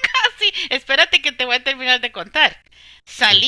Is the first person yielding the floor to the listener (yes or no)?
no